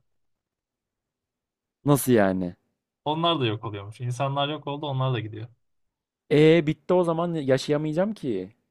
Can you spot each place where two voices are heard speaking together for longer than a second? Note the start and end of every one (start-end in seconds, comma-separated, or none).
none